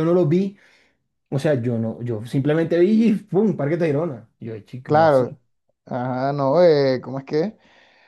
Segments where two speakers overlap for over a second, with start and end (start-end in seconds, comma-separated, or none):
none